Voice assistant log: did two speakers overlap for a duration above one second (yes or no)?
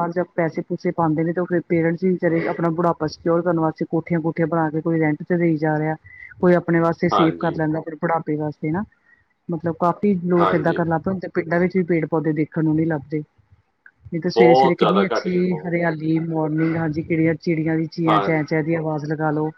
yes